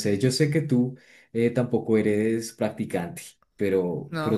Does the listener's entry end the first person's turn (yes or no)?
no